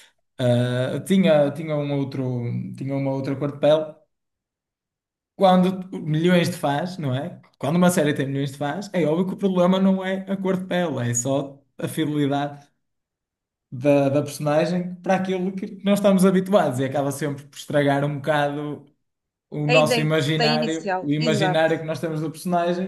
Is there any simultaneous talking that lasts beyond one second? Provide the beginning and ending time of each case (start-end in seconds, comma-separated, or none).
19.7-21.6